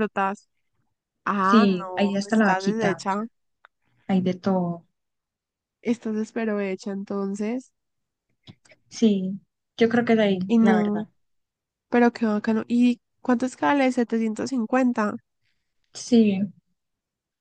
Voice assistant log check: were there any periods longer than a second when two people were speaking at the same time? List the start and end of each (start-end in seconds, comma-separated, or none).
1.4-3.2